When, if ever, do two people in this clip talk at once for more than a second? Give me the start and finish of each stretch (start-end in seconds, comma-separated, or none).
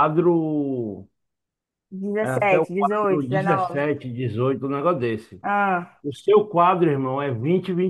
2.2-3.8